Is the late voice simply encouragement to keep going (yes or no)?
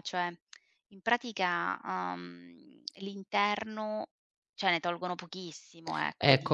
no